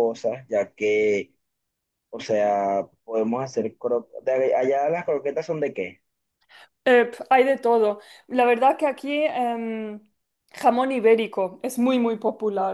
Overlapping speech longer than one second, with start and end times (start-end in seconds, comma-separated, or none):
none